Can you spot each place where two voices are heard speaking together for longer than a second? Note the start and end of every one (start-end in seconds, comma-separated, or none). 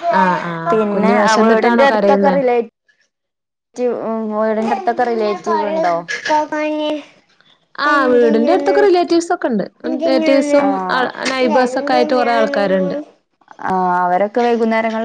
0.7-2.4